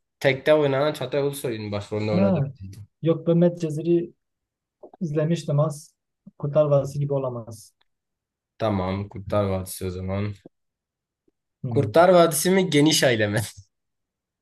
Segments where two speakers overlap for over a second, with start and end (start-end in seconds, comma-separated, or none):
none